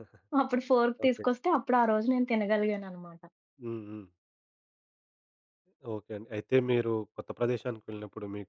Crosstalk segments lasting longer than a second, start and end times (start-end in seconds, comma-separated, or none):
none